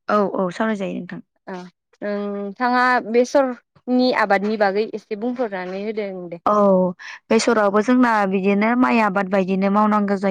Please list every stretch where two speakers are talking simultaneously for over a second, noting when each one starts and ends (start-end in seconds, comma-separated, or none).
none